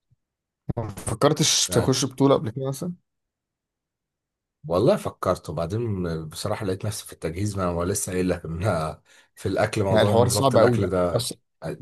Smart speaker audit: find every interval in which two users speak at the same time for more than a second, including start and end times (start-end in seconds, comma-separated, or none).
9.9-11.3